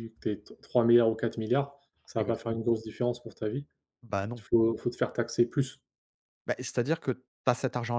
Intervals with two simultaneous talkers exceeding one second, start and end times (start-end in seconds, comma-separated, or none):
none